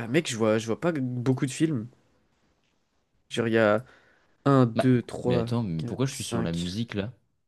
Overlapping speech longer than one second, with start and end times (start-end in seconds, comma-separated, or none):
4.8-6.6